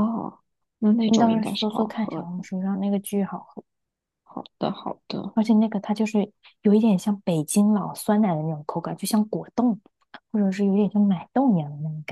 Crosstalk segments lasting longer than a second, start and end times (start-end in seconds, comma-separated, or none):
1.0-2.4